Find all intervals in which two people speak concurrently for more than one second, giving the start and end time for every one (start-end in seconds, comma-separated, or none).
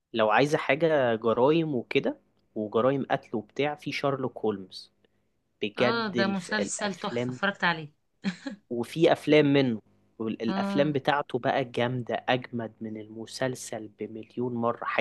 5.8-7.4